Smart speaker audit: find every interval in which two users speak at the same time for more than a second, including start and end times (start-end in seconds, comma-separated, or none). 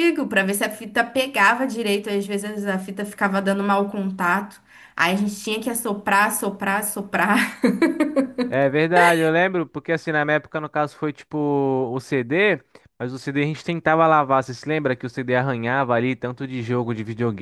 none